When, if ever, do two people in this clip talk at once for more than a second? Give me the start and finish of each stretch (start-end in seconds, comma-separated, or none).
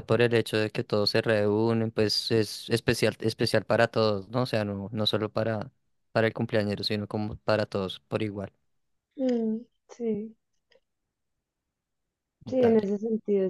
none